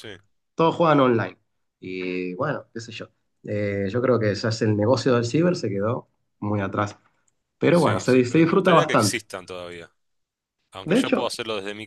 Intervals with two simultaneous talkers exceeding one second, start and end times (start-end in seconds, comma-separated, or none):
7.7-9.2